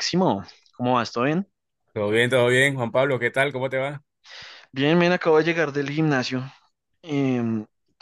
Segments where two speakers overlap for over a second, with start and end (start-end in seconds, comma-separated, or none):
none